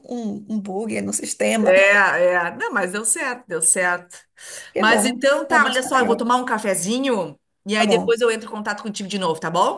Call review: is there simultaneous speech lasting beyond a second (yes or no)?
yes